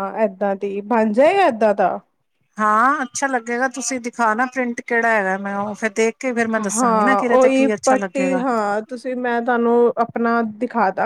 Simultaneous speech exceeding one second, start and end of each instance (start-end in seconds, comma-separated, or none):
6.6-8.4